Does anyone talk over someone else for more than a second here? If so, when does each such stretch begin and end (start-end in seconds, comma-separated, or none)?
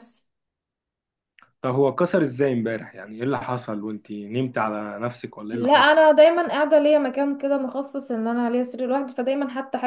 none